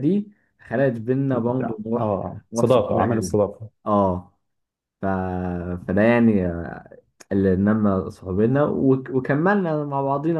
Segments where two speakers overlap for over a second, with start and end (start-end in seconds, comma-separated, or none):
1.3-3.4